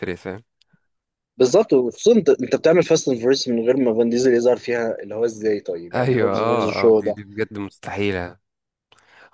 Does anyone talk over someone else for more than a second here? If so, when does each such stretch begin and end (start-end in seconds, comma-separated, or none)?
5.9-7.2